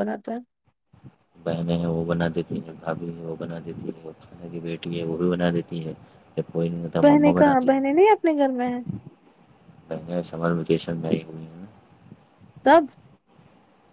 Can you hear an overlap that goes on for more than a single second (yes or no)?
yes